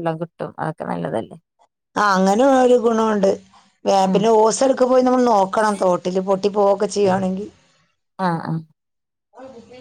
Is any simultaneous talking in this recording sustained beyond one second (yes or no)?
no